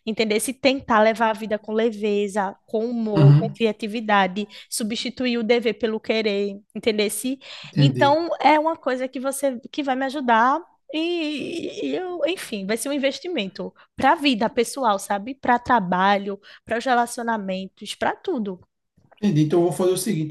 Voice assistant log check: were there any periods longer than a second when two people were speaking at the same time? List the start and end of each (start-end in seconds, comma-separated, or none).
none